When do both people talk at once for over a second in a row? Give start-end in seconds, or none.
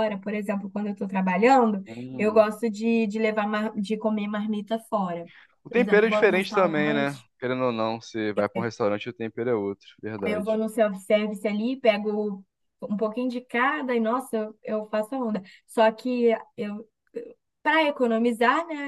5.7-7.3